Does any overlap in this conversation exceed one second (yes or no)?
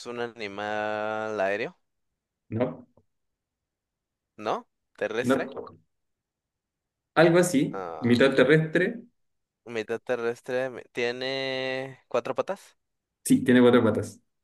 no